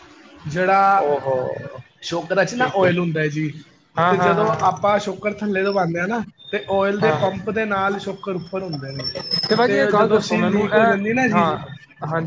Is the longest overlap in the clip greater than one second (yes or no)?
yes